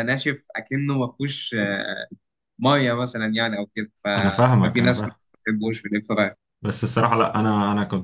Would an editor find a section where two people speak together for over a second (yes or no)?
no